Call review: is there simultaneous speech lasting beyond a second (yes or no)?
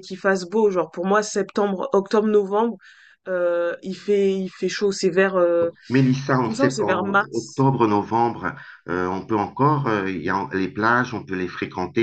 yes